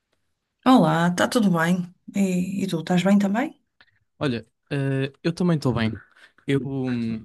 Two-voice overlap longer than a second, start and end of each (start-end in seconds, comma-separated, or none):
none